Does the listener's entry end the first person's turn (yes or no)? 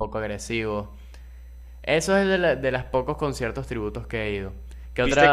yes